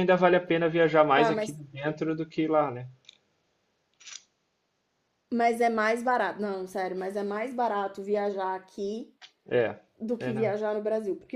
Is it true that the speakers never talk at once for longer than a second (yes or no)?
yes